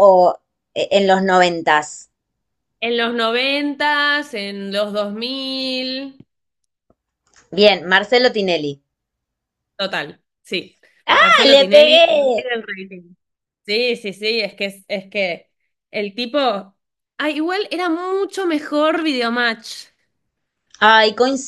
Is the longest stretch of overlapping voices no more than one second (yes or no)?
no